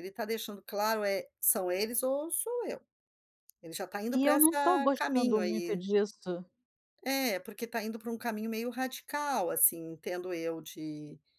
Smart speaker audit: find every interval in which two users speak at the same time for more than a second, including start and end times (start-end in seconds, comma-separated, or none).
4.1-5.9